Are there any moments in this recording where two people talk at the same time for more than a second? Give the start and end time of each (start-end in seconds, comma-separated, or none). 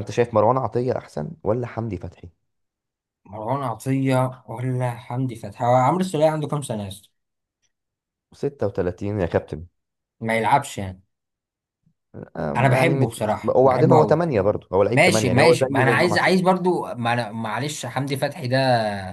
12.6-14.2, 14.9-16.3